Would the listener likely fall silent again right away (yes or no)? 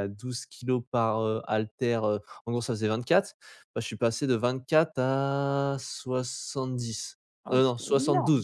yes